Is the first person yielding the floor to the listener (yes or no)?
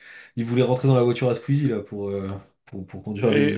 yes